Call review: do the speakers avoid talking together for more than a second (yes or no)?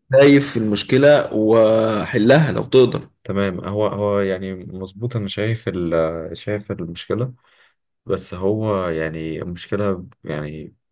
yes